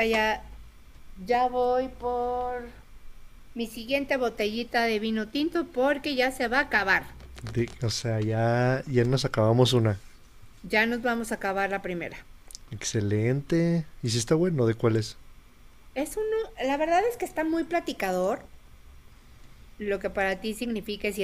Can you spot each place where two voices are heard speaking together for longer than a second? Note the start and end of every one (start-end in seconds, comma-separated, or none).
none